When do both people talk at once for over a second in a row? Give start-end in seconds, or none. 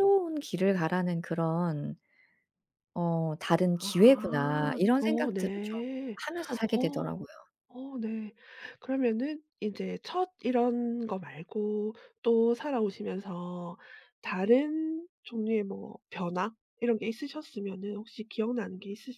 3.8-5.8